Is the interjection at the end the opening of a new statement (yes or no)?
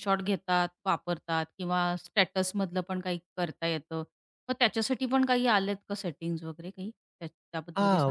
yes